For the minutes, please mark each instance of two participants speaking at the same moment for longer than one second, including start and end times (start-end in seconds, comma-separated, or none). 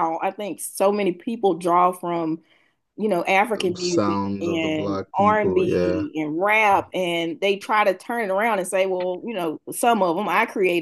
3.8-6.0